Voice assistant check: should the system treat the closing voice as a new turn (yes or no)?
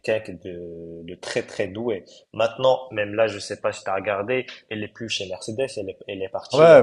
yes